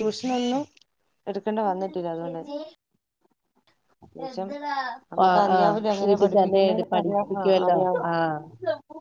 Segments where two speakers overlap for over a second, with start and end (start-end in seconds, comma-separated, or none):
5.3-7.8